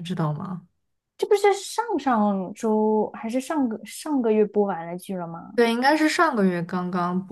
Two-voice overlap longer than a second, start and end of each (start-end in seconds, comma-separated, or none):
none